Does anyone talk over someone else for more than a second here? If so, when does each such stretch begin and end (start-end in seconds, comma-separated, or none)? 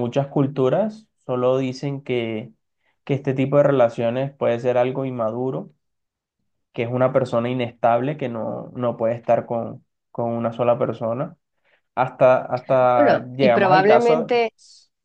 12.9-14.4